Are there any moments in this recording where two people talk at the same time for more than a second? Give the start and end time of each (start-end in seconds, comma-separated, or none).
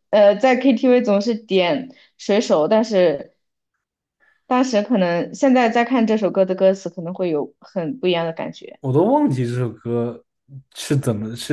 none